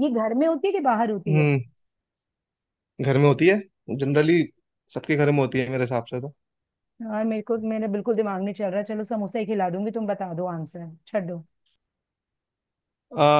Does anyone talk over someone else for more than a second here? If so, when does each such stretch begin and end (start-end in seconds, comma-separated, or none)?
none